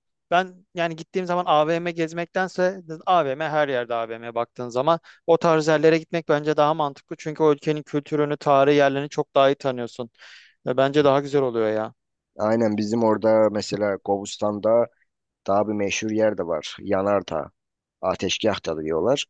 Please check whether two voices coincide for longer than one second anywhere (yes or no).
no